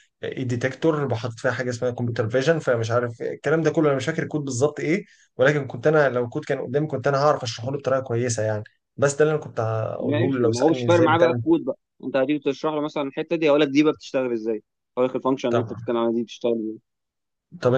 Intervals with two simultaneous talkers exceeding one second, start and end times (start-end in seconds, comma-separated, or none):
10.0-11.4